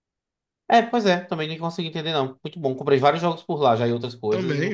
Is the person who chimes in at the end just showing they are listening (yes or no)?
no